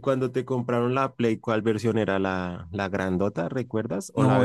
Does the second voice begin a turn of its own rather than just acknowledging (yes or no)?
yes